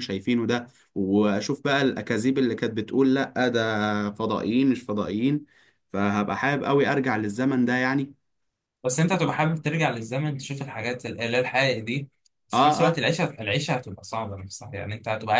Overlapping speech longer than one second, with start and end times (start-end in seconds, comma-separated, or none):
none